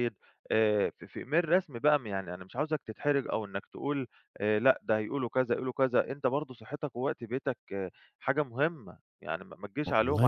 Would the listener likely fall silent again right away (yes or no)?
yes